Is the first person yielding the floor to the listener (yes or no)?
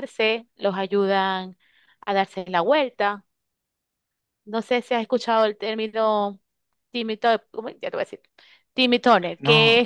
yes